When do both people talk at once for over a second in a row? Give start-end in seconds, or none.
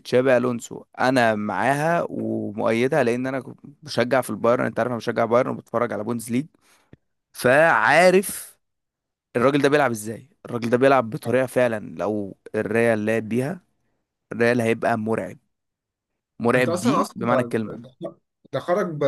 16.6-17.8